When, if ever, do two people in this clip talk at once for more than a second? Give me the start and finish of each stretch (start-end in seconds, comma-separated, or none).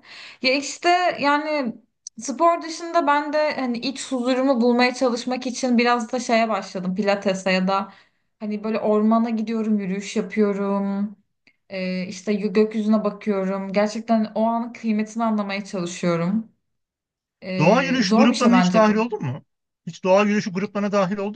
17.6-19.1